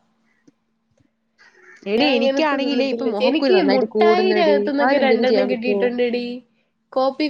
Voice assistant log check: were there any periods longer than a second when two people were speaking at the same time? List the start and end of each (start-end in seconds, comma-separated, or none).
2.0-5.8